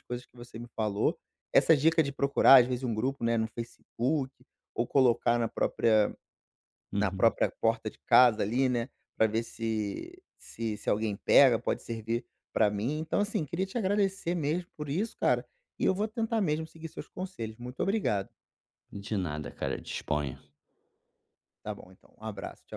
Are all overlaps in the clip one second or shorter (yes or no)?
yes